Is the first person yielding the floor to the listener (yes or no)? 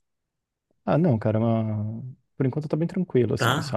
no